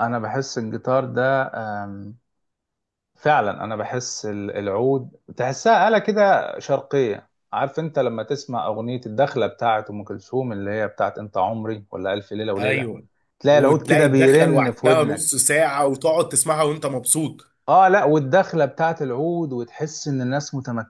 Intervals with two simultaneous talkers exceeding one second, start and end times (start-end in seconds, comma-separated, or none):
13.5-15.3